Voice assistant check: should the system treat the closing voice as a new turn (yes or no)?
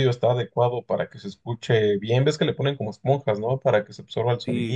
yes